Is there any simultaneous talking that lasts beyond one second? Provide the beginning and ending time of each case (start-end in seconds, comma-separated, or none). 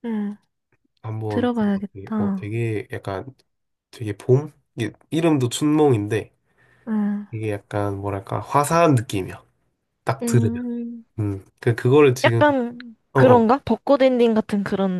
1.3-2.5